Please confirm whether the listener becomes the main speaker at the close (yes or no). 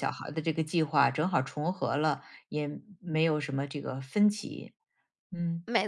no